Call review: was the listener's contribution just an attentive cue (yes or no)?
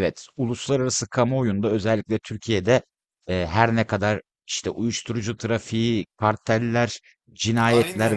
yes